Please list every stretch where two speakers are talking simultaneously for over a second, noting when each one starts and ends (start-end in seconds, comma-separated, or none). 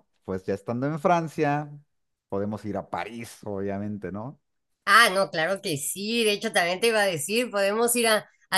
none